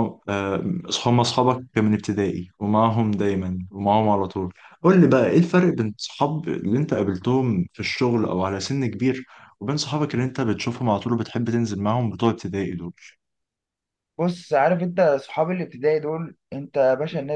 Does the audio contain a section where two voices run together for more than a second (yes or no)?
no